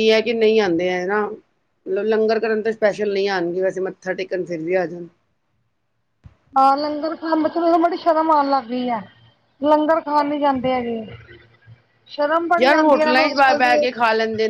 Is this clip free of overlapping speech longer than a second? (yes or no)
no